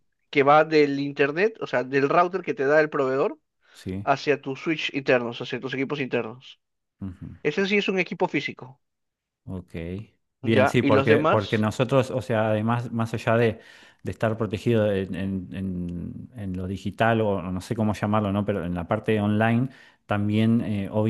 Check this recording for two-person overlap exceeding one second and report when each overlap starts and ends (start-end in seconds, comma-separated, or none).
10.4-11.7